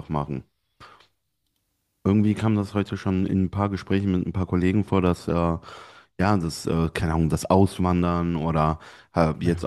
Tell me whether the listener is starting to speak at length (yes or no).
no